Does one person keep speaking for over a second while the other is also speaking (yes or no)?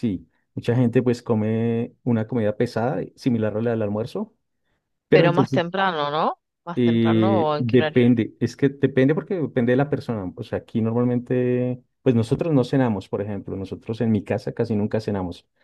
yes